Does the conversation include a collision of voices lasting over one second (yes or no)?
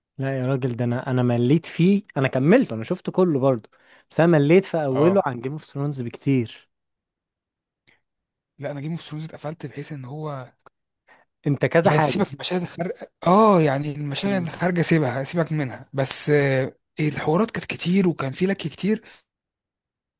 no